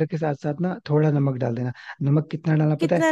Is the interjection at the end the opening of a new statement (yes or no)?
no